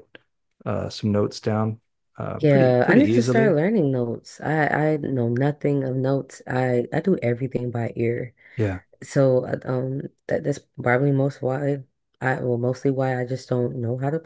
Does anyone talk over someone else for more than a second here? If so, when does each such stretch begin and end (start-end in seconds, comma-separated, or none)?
2.4-3.6